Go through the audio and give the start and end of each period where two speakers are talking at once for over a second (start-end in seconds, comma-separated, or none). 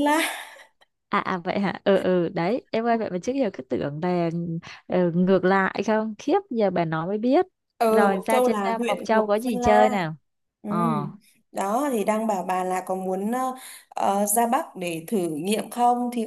7.8-10.0